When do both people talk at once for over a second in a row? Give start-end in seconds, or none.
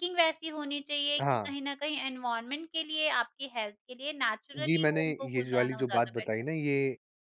4.6-6.5